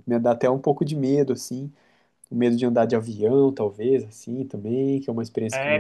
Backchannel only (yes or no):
no